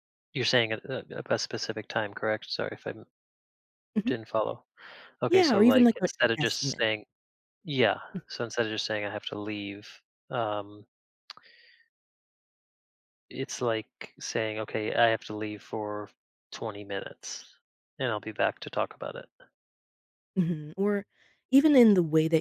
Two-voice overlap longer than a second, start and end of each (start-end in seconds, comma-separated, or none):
5.3-6.9